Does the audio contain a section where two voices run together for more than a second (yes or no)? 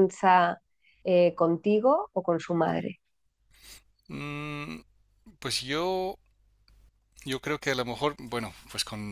no